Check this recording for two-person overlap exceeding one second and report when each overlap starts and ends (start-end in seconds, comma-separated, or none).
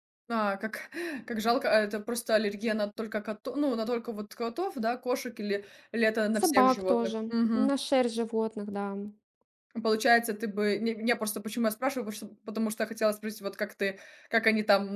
6.4-7.7